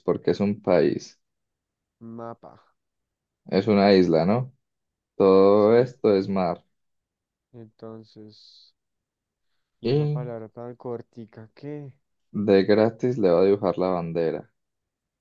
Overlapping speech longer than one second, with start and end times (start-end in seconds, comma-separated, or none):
none